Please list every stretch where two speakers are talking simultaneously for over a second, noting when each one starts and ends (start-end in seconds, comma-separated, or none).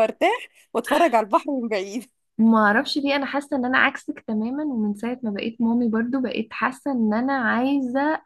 none